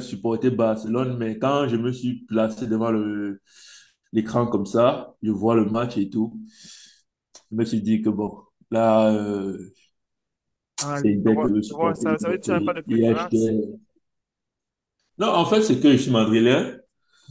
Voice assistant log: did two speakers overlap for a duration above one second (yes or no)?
yes